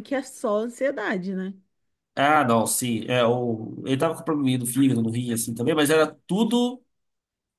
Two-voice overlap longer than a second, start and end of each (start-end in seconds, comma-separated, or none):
none